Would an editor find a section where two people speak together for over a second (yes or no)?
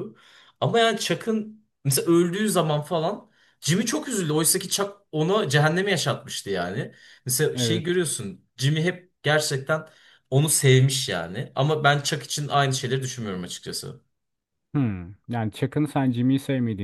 no